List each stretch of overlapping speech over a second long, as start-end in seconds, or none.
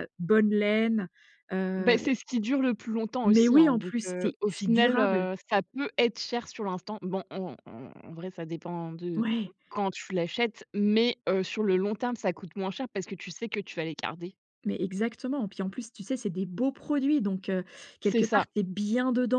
3.3-5.3